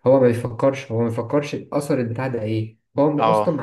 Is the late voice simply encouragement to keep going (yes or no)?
yes